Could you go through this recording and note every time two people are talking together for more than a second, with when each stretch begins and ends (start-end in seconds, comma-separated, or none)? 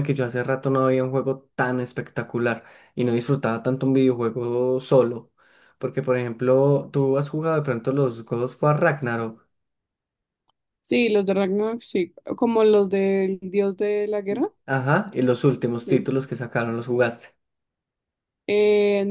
none